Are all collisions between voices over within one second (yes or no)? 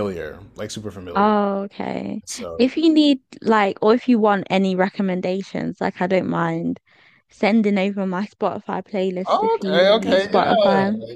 no